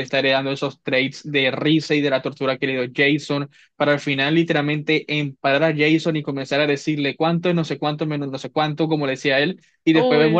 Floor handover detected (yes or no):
no